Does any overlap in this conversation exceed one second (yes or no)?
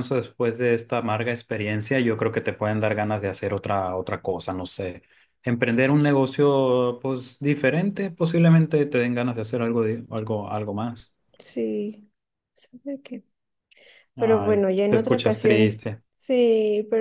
yes